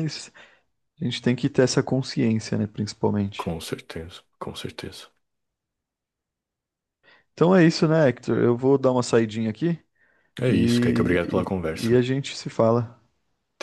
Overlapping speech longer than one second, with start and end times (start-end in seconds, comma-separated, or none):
10.5-11.9